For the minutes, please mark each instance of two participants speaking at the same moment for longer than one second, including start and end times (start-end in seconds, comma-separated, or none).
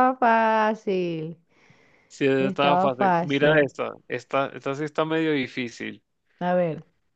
2.4-3.7